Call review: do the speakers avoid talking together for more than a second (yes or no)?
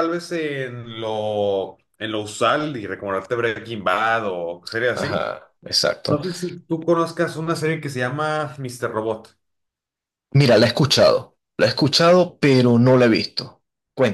yes